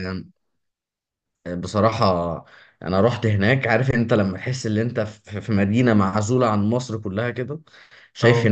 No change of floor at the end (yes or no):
yes